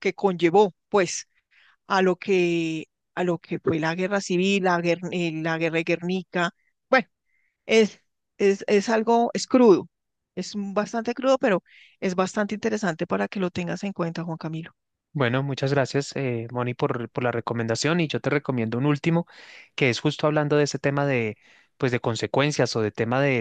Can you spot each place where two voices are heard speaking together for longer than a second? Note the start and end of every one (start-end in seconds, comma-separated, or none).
none